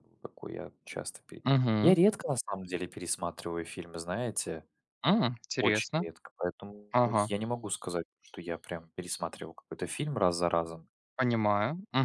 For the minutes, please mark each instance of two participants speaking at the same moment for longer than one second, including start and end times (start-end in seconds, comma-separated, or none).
none